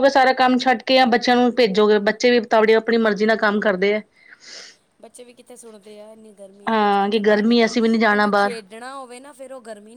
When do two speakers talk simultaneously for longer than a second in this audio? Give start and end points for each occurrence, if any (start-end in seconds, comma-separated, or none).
6.7-8.5